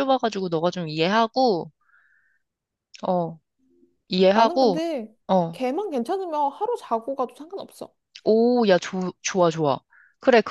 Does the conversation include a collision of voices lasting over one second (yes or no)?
no